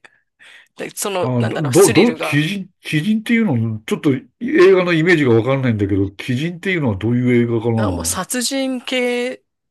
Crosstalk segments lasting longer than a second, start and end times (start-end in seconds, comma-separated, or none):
1.2-2.5